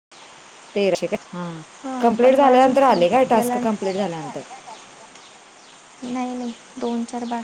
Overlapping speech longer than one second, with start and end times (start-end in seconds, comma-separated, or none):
2.0-3.6